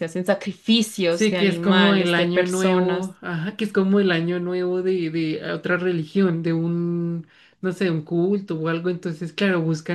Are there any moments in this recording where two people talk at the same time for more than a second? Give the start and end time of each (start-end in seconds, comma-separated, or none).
1.1-3.1